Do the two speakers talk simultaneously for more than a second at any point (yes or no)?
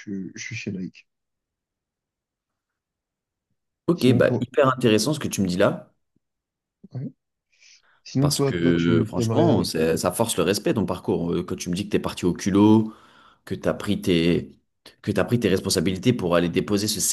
yes